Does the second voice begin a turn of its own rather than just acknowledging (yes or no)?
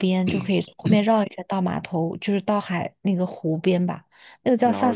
no